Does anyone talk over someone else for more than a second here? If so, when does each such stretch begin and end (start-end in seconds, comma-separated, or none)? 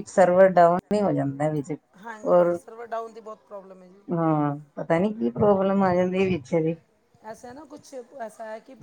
none